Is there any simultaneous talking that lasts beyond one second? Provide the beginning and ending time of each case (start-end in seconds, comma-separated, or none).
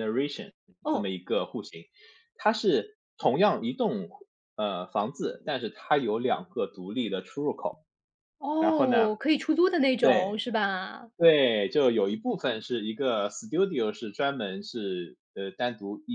none